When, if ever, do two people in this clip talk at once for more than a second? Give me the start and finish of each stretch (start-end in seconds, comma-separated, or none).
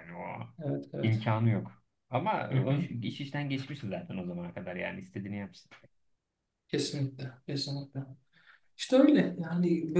none